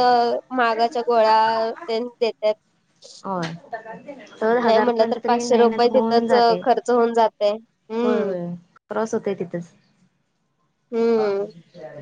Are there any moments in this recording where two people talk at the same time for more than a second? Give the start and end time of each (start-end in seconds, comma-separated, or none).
4.6-6.6